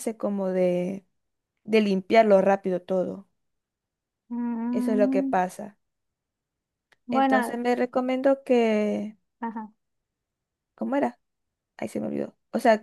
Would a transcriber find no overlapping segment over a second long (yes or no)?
yes